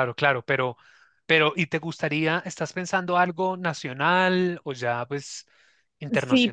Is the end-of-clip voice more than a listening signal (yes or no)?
yes